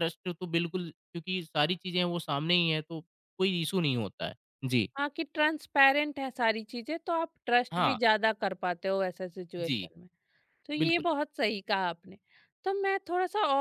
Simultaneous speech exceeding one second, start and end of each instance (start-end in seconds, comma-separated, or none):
none